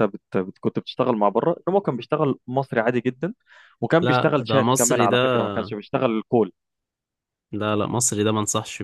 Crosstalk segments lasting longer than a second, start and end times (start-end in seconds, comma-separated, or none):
4.0-5.4